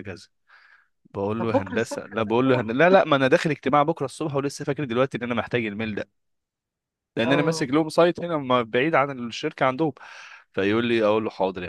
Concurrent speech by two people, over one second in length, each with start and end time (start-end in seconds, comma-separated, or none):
1.4-2.7